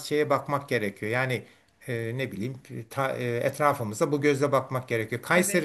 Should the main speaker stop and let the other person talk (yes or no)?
no